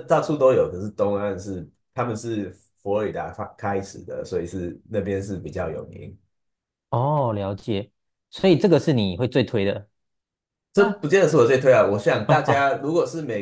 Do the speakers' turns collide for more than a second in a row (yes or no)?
no